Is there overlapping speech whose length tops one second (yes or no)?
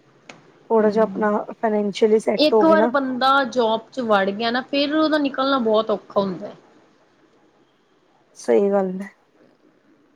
no